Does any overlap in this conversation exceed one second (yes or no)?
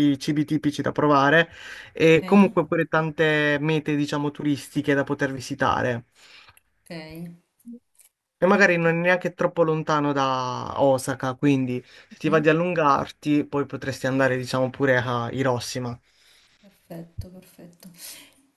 no